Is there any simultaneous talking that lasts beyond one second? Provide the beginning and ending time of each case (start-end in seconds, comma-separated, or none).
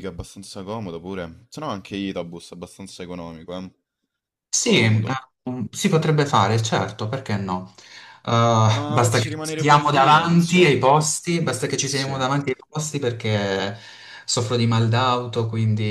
8.7-10.9